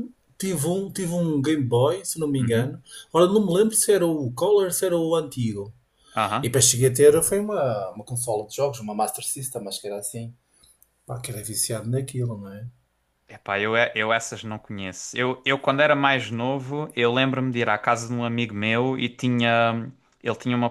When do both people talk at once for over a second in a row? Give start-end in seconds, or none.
none